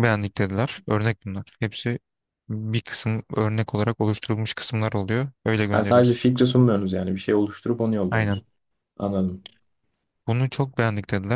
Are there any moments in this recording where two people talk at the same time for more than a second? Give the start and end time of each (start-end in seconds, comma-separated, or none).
none